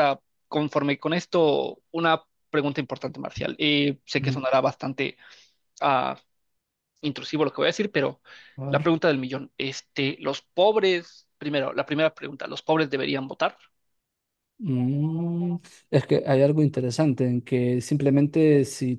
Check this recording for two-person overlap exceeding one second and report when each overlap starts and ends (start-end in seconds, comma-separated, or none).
none